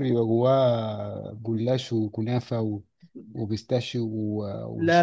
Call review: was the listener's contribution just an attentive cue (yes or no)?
no